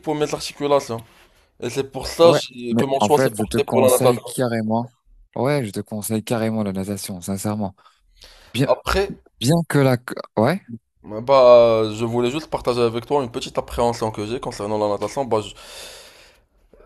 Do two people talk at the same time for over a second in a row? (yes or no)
yes